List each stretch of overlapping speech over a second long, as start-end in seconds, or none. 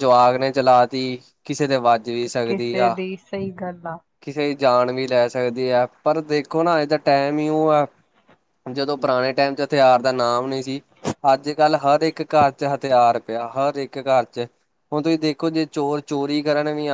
none